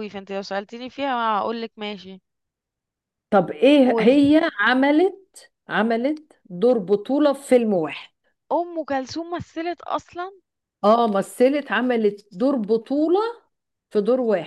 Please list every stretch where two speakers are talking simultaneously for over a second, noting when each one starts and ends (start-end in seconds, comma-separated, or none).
none